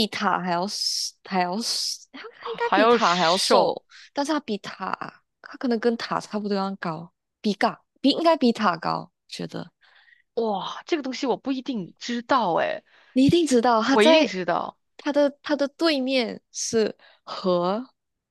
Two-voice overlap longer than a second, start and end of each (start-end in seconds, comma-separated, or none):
2.4-3.8